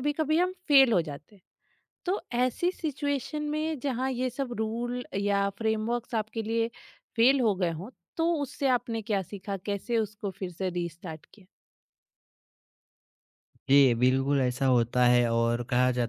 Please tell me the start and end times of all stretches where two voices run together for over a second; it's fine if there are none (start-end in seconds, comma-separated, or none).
none